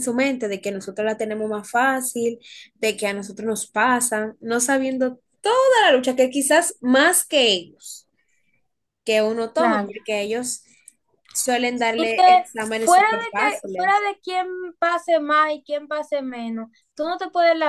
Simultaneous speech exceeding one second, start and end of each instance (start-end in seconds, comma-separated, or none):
12.0-14.0